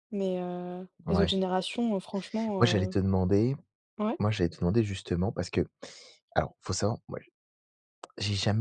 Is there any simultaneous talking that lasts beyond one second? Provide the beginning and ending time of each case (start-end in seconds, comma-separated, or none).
none